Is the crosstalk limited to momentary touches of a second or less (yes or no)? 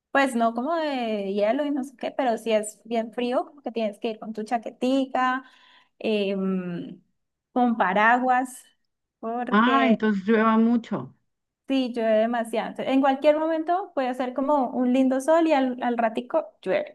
yes